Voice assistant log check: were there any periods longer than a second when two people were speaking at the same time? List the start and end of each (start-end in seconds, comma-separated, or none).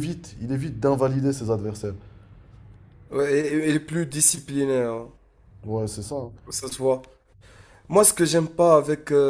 none